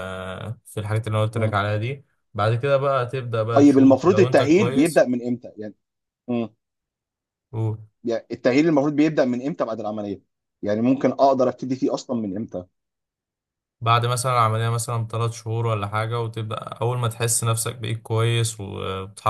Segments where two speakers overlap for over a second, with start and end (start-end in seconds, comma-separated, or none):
3.5-5.0